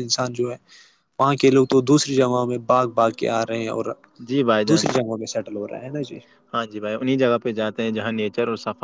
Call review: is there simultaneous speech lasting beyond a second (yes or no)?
no